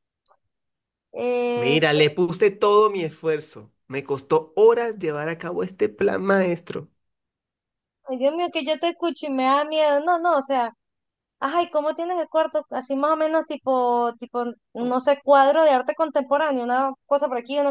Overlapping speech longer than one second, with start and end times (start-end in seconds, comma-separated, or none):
none